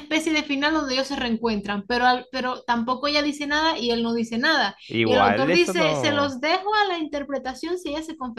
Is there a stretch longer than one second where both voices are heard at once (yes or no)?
yes